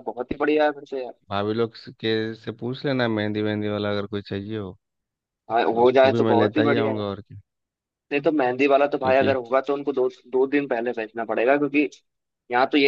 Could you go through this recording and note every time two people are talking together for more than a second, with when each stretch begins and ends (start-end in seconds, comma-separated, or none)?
5.7-7.0